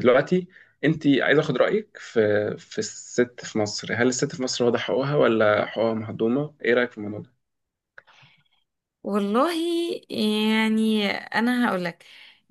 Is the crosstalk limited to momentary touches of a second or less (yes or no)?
yes